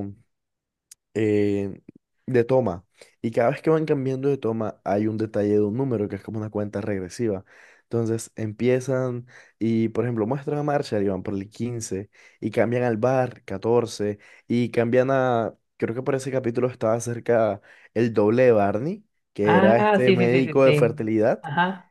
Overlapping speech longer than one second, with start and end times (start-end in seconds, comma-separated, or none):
19.4-20.9